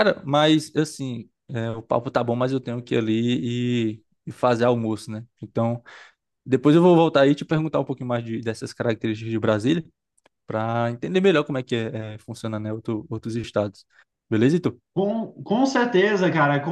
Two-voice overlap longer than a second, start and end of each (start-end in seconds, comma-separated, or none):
none